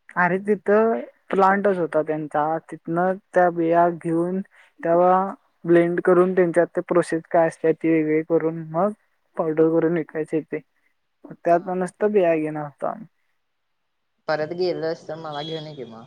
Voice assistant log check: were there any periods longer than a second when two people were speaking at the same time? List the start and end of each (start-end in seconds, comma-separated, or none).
none